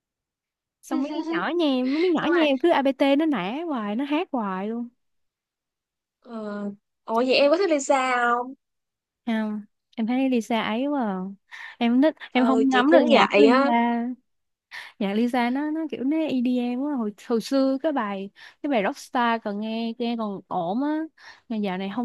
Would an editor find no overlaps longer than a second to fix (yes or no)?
no